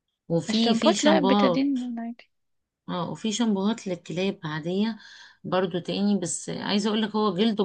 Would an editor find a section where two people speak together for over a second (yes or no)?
yes